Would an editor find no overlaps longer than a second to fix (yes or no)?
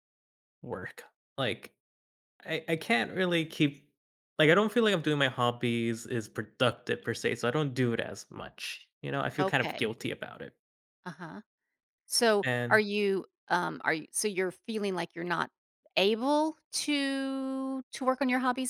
yes